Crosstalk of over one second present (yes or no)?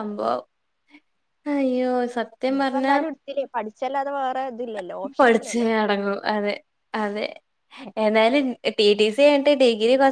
no